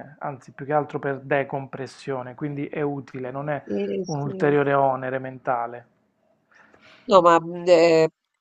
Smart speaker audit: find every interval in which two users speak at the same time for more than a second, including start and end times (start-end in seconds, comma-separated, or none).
none